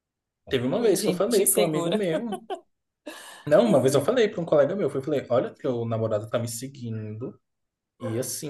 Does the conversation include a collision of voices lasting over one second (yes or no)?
yes